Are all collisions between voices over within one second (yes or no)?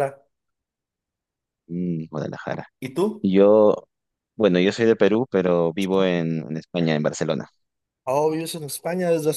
yes